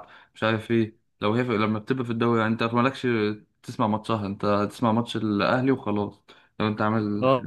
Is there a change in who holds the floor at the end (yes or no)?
yes